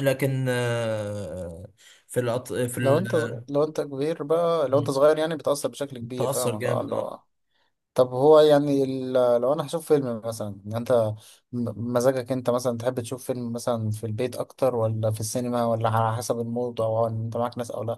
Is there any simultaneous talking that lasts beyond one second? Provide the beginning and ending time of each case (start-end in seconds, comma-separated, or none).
none